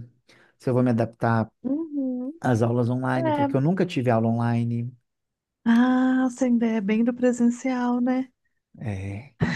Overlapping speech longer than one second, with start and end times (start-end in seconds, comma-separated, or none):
none